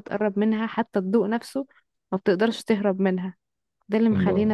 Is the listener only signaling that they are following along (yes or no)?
yes